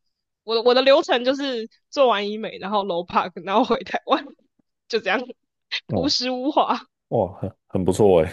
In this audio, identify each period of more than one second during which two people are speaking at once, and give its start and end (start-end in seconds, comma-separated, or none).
none